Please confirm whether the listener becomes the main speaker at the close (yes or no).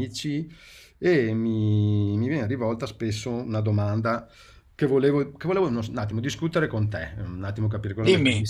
no